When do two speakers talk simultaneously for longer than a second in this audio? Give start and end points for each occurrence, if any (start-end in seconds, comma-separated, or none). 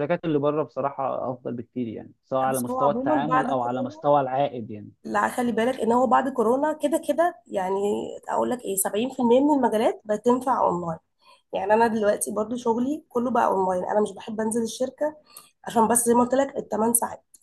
2.4-4.0